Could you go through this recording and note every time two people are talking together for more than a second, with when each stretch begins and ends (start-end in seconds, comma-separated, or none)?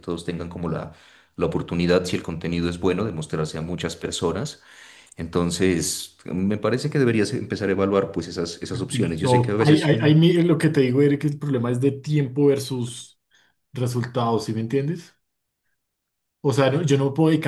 8.9-10.1